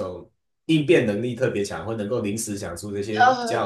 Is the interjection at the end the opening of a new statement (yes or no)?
yes